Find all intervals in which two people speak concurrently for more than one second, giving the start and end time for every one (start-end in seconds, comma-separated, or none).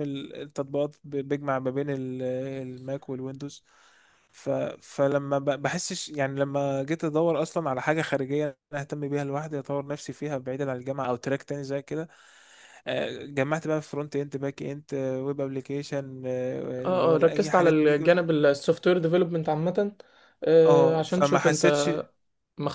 16.8-18.3, 20.7-21.9